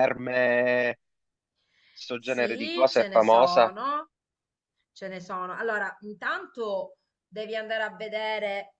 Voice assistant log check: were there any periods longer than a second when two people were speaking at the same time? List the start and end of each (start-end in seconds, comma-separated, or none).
2.2-3.7